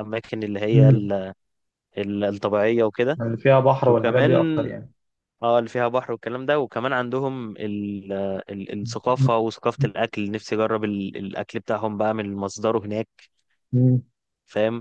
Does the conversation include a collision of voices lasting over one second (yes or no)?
no